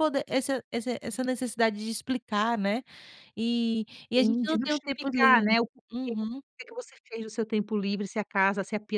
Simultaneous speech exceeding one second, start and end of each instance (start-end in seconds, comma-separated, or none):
4.1-6.1